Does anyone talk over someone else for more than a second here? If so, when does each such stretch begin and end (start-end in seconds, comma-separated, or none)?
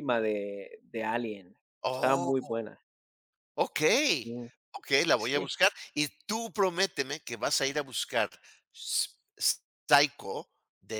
none